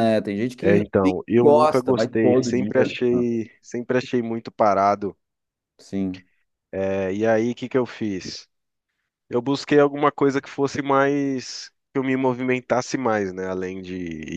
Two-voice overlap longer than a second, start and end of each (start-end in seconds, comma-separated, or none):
0.6-3.2